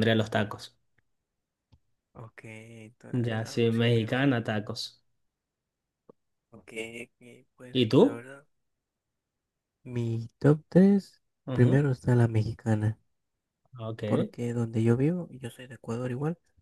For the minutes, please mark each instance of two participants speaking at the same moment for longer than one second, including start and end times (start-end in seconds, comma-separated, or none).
3.1-4.3